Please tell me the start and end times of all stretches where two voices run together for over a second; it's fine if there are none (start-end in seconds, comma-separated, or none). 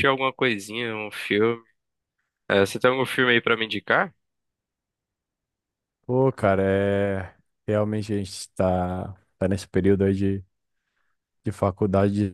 none